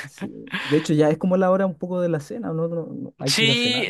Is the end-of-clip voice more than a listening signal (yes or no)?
yes